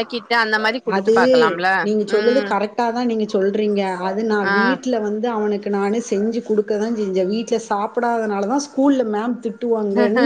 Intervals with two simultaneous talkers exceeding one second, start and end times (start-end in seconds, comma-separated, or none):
none